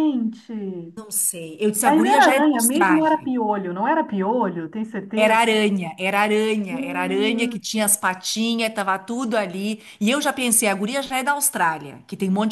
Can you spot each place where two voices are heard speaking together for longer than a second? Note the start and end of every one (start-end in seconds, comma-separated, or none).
1.9-3.3, 6.7-7.9